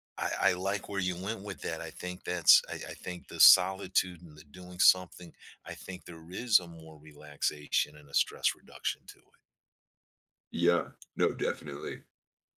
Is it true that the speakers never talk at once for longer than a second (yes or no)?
yes